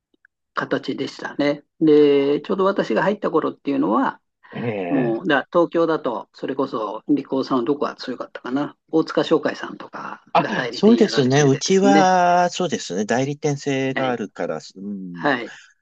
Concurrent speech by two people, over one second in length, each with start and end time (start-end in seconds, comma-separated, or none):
10.3-12.2